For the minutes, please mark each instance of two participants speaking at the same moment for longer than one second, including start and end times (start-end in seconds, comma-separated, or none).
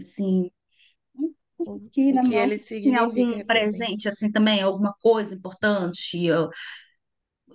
1.9-3.9